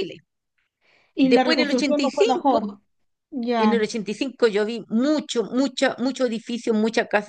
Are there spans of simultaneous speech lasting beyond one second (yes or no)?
yes